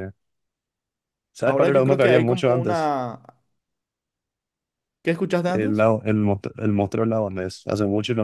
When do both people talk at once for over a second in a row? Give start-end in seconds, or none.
1.4-2.9